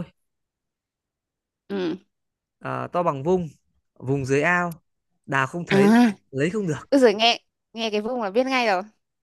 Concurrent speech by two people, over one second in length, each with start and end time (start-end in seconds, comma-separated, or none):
none